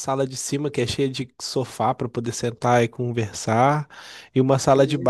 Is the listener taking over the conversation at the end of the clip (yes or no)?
no